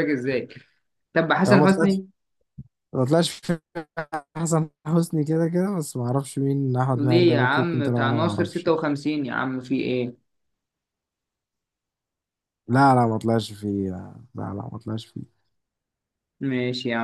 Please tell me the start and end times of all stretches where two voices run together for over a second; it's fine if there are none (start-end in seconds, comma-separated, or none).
7.0-8.7